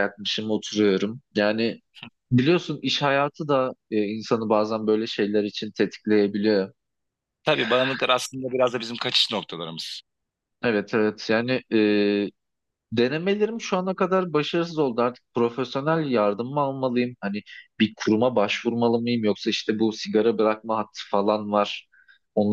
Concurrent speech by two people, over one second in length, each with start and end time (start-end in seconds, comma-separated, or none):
none